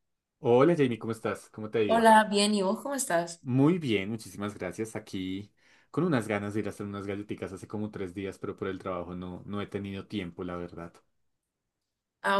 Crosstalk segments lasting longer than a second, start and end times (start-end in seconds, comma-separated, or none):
none